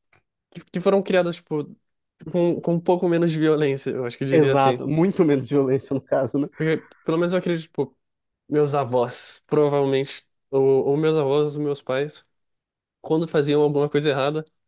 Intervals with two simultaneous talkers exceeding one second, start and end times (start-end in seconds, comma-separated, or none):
none